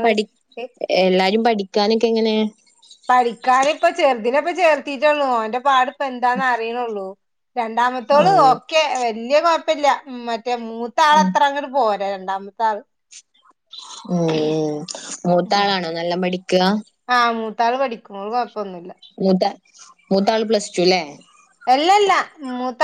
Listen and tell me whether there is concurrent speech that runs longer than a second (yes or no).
no